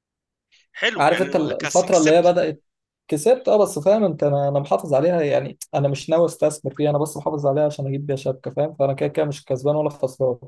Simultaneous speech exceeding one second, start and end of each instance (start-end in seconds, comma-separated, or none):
1.0-2.4